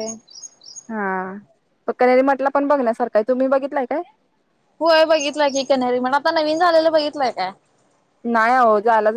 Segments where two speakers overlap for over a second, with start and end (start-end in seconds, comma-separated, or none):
none